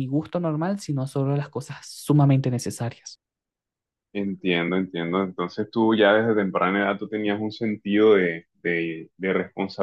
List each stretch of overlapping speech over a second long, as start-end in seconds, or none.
none